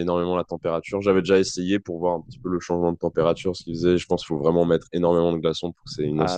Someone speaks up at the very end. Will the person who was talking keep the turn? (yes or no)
no